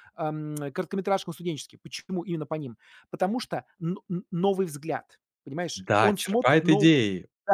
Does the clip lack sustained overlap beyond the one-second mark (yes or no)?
no